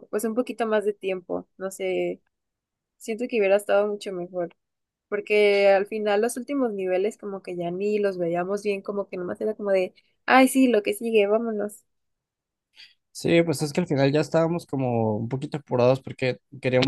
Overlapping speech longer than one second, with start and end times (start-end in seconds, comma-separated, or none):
none